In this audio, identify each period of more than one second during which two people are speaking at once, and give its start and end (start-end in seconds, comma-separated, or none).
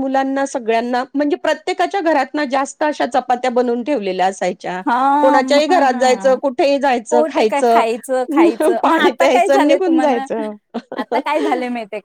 8.8-10.2